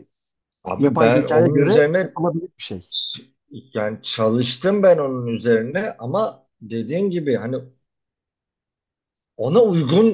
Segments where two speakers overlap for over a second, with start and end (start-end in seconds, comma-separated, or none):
0.8-2.1